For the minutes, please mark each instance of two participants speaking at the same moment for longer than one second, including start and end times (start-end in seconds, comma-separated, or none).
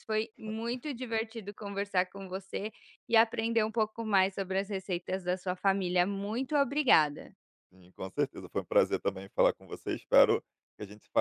none